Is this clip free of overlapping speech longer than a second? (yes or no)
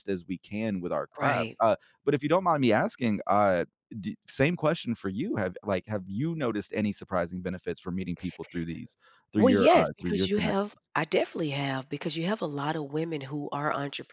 no